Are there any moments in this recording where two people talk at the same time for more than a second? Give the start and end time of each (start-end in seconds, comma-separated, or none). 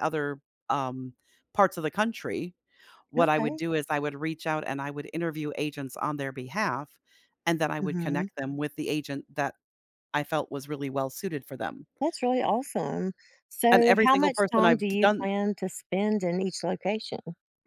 13.7-15.3